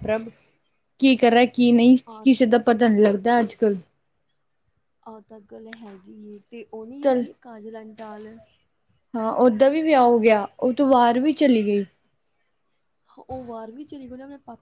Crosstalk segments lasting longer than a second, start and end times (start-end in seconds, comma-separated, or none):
none